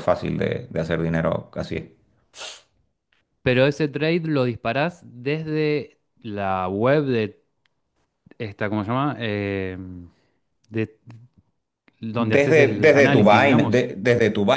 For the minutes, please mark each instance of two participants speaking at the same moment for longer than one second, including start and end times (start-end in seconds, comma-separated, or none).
12.2-13.8